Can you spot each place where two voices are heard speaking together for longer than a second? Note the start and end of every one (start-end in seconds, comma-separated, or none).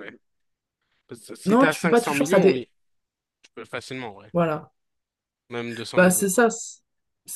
1.5-2.7